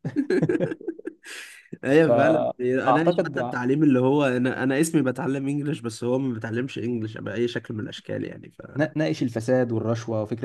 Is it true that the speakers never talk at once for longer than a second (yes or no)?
no